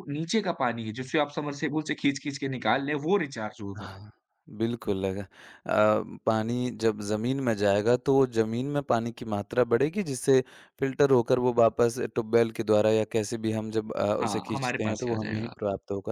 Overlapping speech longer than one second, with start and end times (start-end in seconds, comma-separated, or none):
14.2-15.5